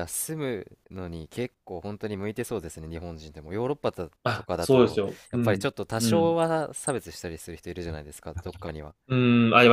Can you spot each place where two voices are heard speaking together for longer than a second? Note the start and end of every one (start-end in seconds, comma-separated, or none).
4.2-6.4